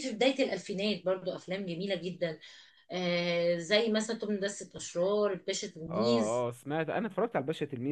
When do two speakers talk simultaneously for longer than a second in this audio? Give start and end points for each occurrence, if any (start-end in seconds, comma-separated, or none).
none